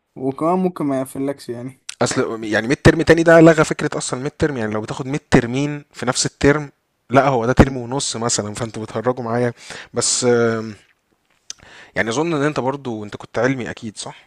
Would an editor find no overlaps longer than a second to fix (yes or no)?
yes